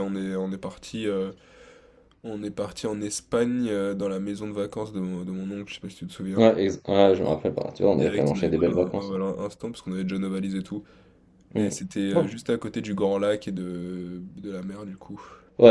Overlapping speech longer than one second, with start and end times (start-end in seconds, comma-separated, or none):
7.9-9.2